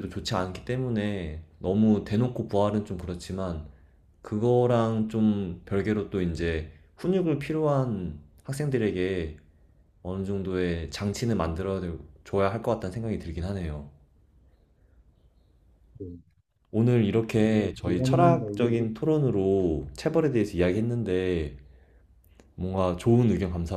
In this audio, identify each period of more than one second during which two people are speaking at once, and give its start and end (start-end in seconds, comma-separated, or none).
17.4-18.8